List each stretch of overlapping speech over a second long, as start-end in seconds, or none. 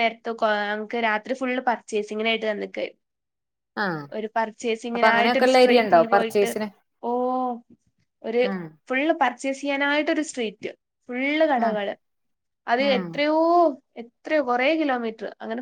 5.0-6.5